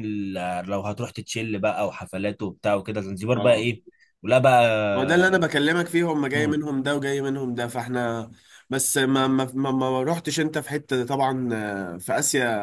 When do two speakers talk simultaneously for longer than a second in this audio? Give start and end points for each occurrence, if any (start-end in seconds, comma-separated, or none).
none